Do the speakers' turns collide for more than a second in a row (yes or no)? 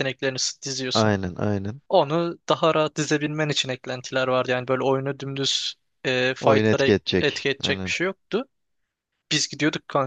yes